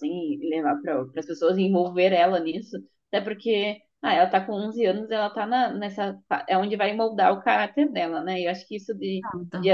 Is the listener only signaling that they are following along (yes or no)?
yes